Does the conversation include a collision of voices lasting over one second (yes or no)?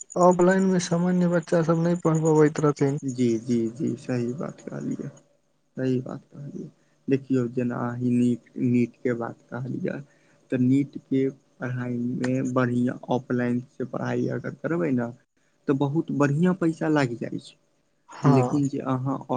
no